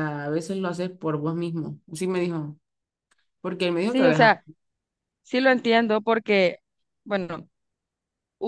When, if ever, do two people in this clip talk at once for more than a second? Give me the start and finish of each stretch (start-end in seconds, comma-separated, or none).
none